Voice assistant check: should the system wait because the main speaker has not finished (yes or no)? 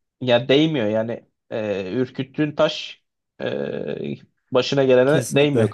no